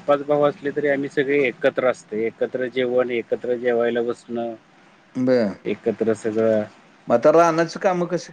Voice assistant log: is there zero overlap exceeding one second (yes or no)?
yes